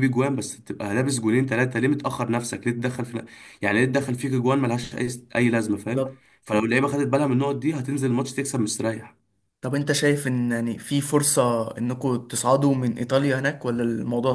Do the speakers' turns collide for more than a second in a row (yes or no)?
no